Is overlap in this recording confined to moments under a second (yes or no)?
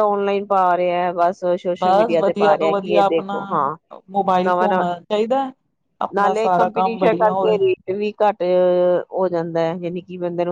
no